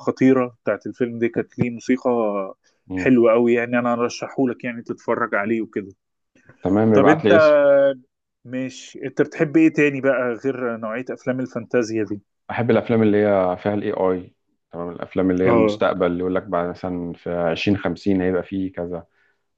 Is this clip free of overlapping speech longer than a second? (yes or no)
yes